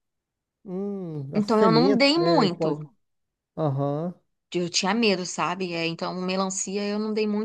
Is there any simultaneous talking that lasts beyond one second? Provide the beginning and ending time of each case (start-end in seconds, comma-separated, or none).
1.4-2.8